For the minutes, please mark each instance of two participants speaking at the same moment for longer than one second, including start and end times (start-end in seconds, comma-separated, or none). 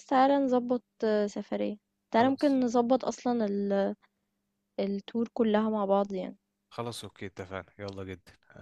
none